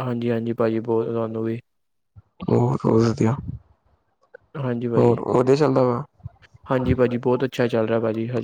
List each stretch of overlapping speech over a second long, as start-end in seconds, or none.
none